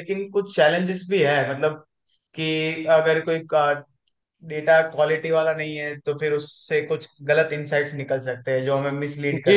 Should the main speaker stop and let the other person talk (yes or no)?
yes